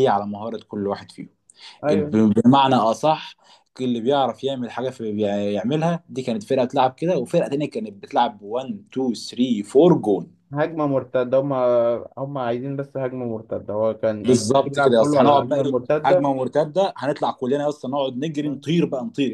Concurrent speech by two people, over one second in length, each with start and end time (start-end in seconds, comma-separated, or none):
14.2-16.3